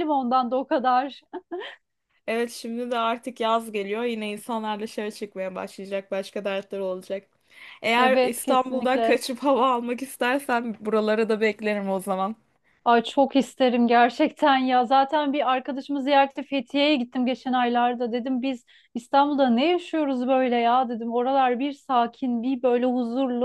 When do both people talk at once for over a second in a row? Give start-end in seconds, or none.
8.0-9.2